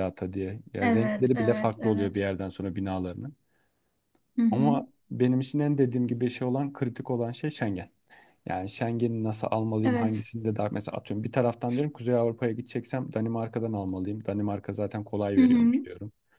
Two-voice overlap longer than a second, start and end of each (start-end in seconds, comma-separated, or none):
0.8-2.2